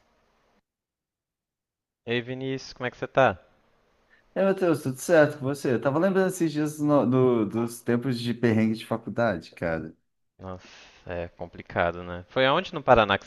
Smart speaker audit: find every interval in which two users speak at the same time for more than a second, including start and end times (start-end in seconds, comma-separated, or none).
none